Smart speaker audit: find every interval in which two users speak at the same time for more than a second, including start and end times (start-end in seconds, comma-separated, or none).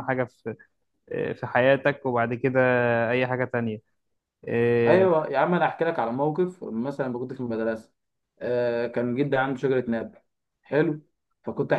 none